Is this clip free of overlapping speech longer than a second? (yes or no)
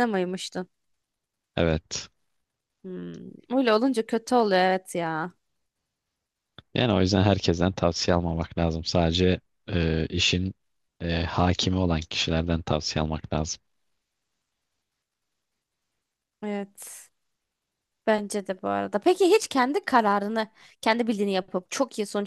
yes